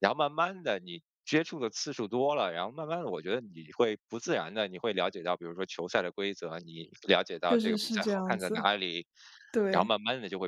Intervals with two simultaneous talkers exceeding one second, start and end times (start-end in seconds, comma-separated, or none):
7.4-8.7